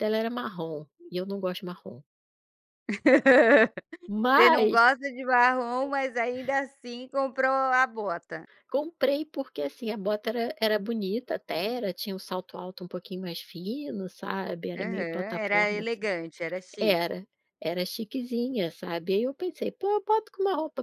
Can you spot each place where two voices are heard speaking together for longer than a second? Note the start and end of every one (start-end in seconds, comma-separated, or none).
14.8-16.1